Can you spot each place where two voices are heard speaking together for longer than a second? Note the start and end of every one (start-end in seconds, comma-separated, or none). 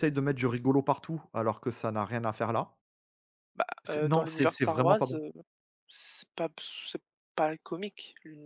3.9-5.2